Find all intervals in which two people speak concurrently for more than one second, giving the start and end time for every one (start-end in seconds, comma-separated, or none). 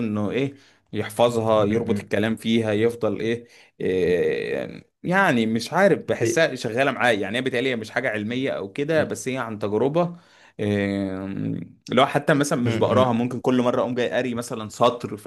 none